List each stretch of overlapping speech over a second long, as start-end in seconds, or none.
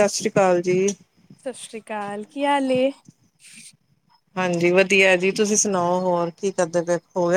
none